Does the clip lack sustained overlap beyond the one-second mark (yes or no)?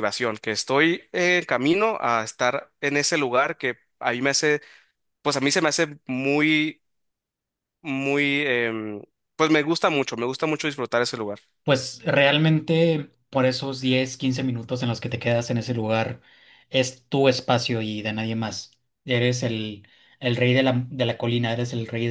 yes